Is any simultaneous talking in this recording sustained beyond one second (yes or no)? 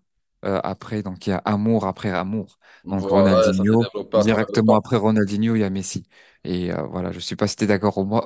yes